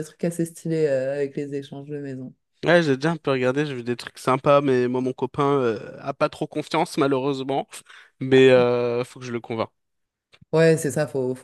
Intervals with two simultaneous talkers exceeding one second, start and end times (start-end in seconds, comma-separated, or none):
none